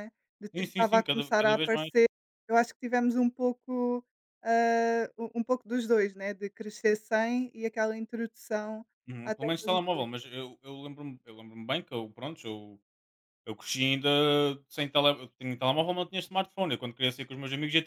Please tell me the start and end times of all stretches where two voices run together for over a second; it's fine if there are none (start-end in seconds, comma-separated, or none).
0.5-1.9